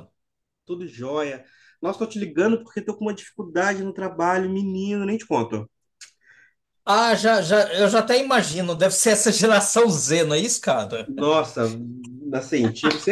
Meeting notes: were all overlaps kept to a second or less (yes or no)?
yes